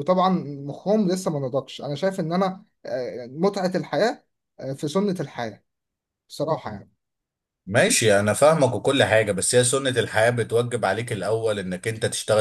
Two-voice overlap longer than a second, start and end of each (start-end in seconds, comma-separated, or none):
none